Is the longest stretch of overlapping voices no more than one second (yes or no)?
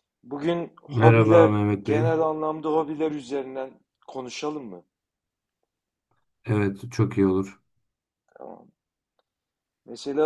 no